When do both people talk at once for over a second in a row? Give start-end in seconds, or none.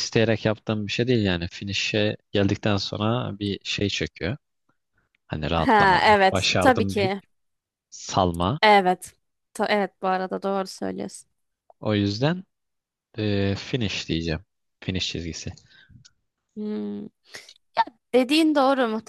5.6-7.1